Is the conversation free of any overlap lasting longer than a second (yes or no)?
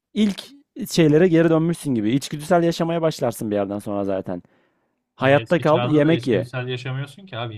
no